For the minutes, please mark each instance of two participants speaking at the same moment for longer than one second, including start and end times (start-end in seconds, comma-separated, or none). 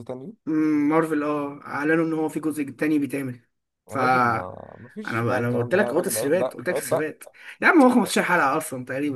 5.0-7.1